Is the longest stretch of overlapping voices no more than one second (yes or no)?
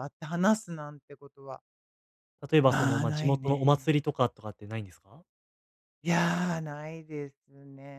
no